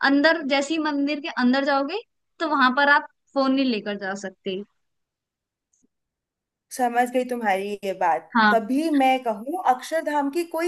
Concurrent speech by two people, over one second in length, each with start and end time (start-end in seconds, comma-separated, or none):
none